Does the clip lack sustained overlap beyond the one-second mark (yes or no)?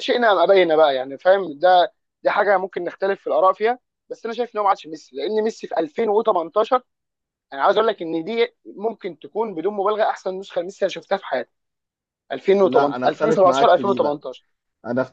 no